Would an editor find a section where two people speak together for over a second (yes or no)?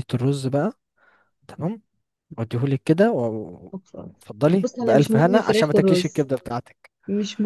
yes